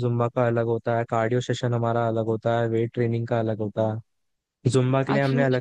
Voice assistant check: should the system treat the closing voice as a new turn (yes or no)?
no